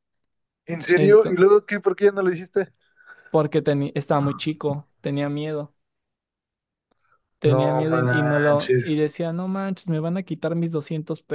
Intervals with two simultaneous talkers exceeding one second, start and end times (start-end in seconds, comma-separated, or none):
7.4-8.9